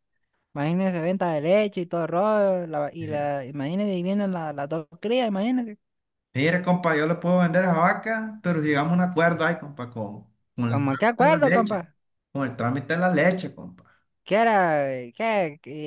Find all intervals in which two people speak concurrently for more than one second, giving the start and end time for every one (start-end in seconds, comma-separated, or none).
10.7-11.9